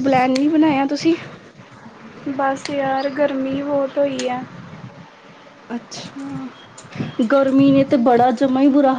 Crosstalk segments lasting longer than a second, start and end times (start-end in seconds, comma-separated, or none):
none